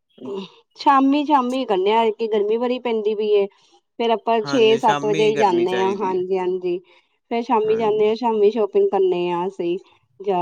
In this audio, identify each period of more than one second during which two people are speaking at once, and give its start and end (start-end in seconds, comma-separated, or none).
4.4-6.2